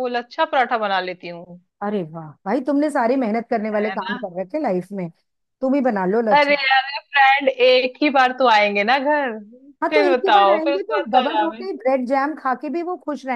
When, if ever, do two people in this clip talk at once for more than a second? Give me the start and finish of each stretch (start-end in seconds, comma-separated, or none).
9.9-11.7